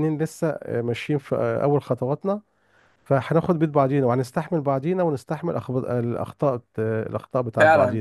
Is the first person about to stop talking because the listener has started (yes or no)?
yes